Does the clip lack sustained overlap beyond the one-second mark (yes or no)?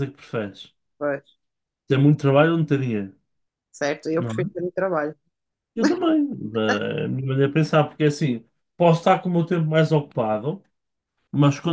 yes